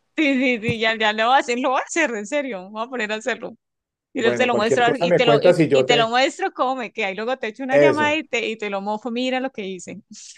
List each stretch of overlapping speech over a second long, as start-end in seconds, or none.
4.2-6.1